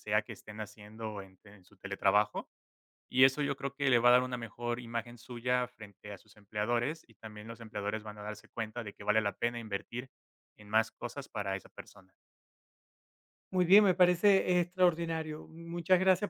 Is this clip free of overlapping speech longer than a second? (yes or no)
yes